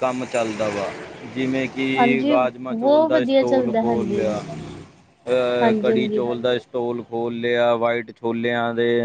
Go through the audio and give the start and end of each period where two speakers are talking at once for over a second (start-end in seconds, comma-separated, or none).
2.0-4.2